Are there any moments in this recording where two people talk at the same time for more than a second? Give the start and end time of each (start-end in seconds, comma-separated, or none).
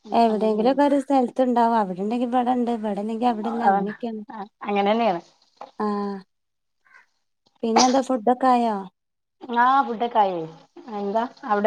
none